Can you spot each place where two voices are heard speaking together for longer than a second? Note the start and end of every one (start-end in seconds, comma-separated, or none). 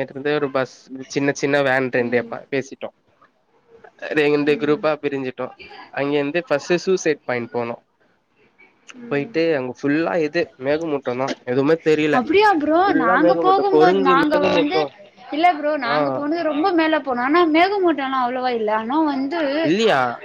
12.9-14.8